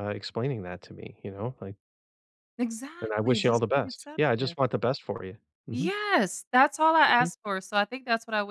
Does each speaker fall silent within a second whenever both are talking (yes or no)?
no